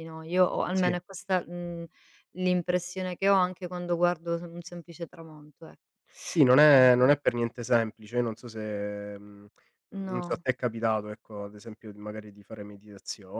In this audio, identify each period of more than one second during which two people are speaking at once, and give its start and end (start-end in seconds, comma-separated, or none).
none